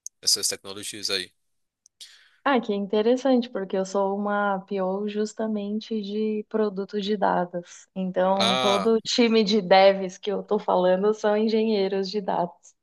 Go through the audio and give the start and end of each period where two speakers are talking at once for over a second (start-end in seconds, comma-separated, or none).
none